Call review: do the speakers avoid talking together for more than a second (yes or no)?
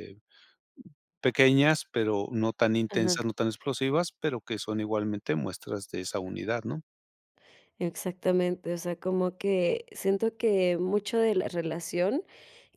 yes